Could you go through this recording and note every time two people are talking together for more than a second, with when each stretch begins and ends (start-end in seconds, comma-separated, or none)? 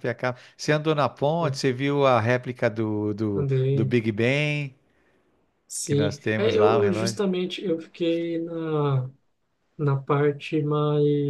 5.8-7.2